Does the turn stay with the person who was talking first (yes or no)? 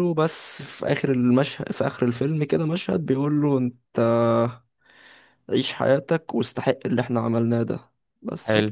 yes